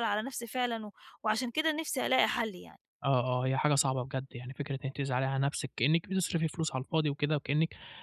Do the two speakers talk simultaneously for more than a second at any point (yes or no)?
no